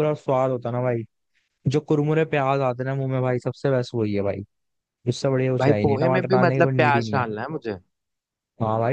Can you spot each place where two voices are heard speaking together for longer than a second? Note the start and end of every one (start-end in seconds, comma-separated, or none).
5.6-7.3